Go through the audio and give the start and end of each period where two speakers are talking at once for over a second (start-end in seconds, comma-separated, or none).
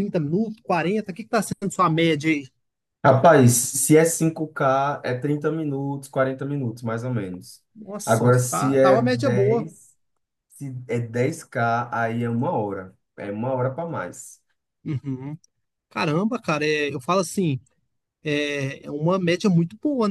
8.0-9.7